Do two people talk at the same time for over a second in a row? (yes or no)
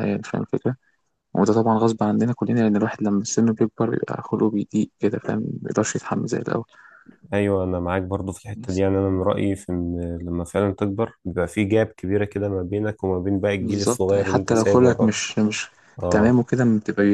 yes